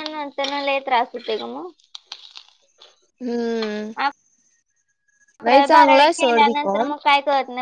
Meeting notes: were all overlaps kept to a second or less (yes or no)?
no